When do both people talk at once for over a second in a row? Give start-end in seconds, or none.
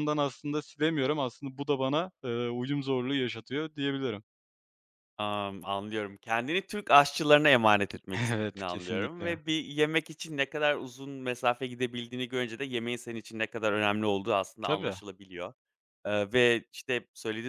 8.2-9.4